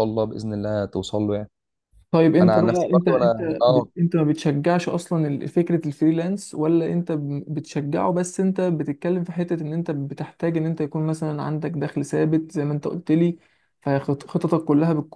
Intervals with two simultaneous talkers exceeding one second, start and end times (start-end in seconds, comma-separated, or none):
2.4-3.9